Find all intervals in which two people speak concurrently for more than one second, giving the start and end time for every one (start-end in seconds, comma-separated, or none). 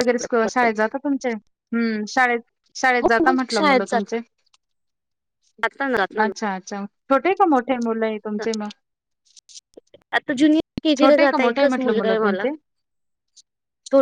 11.0-12.4